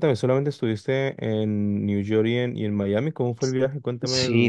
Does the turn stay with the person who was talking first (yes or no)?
no